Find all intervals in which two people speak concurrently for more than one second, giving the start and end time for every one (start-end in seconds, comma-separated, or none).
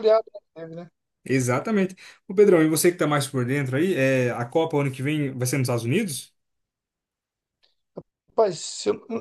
none